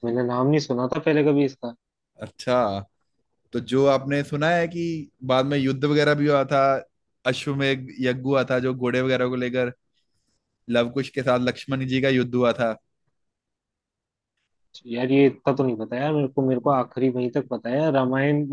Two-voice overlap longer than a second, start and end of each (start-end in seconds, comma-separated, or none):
none